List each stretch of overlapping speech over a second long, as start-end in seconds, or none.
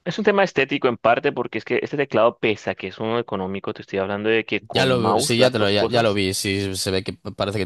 4.7-6.2